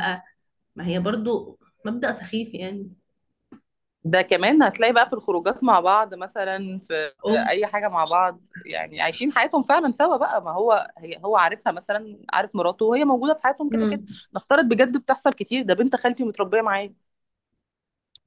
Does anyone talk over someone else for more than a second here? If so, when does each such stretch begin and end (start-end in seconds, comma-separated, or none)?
none